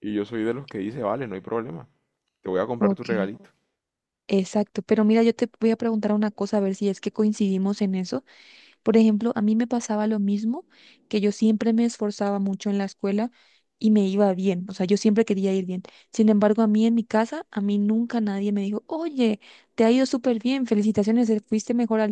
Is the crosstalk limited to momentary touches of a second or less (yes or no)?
yes